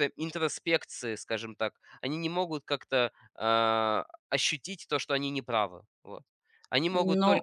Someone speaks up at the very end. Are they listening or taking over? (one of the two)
taking over